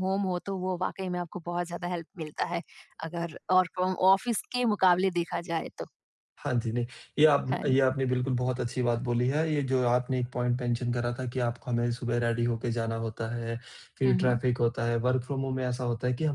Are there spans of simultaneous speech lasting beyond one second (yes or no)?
no